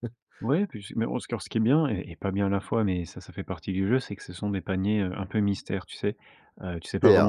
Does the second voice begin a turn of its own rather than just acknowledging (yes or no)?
yes